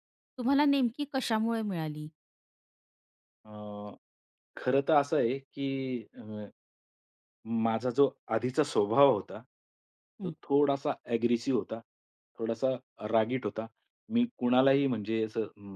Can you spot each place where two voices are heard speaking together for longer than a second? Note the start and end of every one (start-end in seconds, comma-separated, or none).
none